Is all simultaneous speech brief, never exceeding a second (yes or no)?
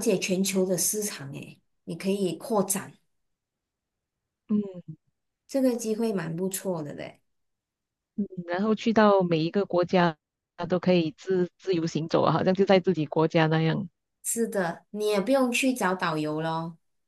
yes